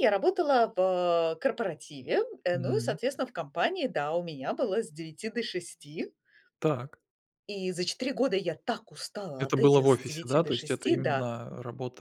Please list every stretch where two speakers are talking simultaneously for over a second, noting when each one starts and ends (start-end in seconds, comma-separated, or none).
9.4-11.3